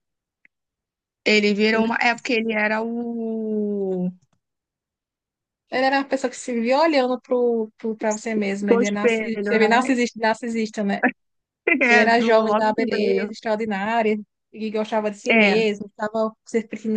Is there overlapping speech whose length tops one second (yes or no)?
yes